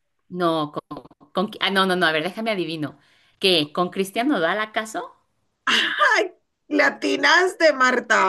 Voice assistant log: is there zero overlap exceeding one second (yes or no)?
yes